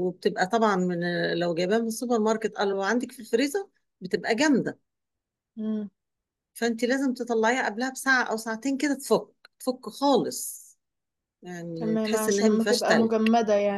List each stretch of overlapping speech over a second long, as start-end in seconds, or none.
11.7-13.1